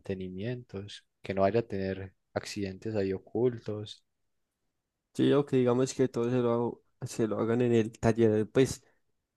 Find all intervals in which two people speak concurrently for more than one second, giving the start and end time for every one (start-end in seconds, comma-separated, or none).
none